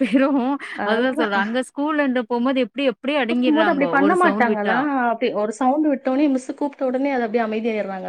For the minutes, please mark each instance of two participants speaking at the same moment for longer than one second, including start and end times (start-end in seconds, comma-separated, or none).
3.3-4.8